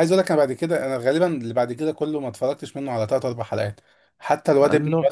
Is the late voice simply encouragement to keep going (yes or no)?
yes